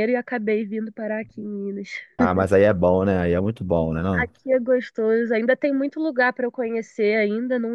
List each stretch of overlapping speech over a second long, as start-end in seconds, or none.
none